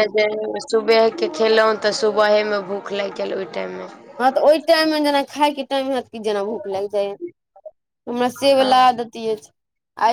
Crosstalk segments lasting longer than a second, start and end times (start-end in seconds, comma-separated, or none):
none